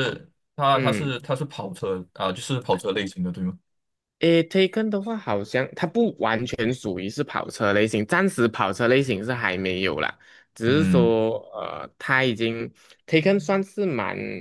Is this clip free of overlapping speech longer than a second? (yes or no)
yes